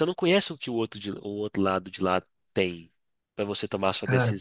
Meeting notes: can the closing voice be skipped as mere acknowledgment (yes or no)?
yes